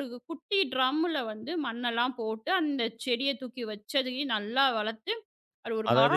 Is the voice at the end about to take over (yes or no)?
yes